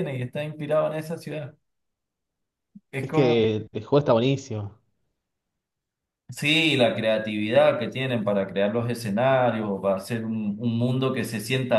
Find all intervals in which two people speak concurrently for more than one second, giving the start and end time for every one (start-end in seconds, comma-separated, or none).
none